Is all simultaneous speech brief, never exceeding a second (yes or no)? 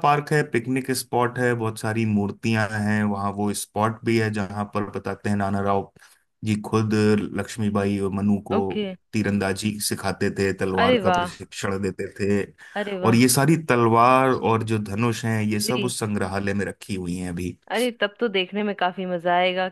yes